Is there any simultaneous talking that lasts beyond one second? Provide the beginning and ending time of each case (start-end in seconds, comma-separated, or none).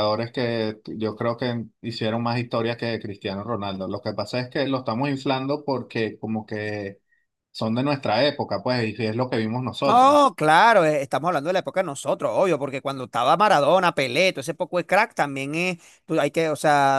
none